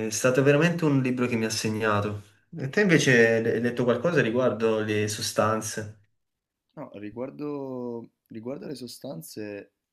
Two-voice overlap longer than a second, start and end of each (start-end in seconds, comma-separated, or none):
none